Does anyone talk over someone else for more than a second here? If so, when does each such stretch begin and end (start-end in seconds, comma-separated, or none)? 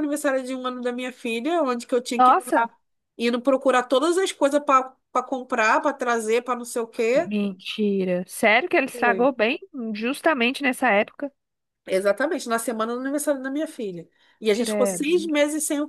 none